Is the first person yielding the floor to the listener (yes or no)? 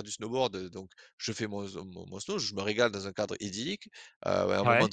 no